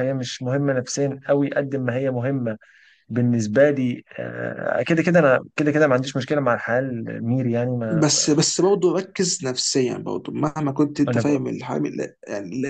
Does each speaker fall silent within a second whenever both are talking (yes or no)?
yes